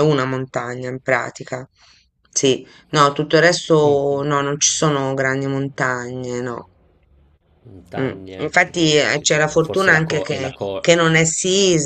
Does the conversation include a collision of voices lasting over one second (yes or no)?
yes